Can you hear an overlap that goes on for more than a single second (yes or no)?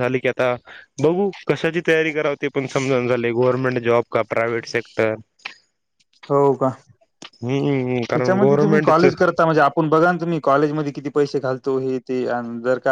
yes